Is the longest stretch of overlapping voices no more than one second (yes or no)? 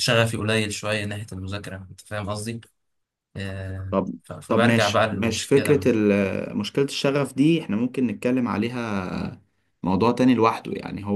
no